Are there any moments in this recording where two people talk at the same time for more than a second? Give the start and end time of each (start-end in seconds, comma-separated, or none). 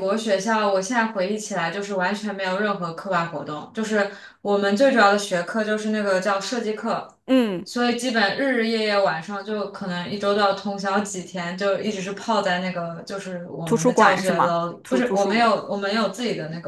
13.6-15.7